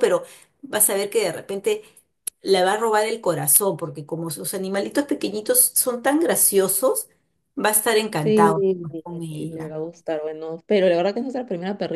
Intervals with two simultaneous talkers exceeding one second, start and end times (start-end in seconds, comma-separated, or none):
none